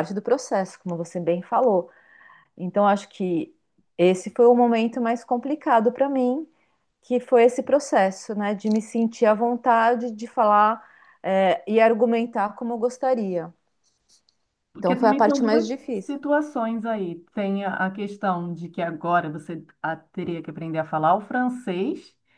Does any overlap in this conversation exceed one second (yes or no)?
yes